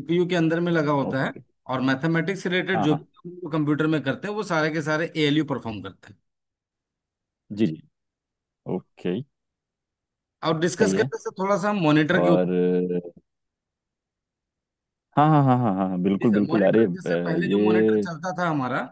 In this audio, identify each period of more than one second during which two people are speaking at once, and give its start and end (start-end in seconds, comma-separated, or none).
16.2-18.1